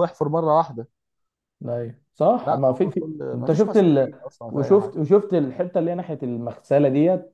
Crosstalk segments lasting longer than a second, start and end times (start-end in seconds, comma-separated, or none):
2.4-5.0